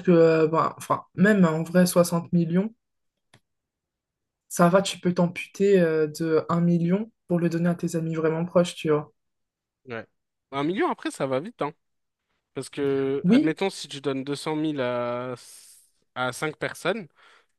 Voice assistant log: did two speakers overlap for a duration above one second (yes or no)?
no